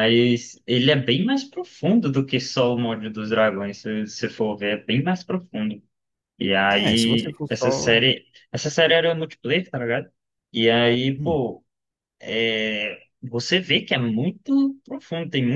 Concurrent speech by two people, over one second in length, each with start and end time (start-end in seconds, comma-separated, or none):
6.7-8.0